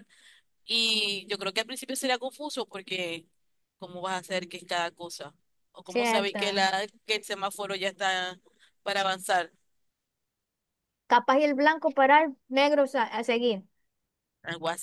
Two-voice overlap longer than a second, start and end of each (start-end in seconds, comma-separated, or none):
none